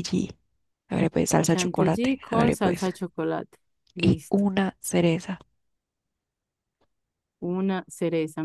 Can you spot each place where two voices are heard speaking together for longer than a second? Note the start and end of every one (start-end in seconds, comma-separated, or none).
1.5-2.9